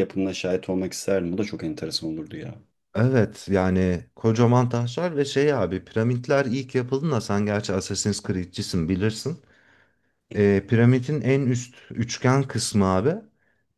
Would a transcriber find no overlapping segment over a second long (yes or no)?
yes